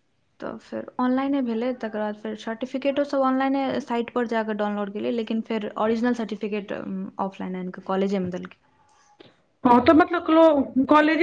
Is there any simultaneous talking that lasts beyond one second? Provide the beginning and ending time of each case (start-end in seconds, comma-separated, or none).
none